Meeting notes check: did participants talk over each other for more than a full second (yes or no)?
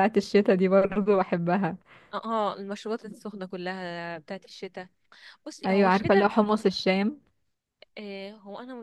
no